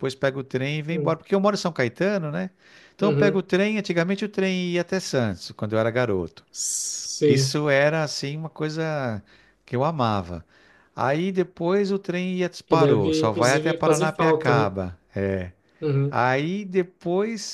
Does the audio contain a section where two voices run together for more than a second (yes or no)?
yes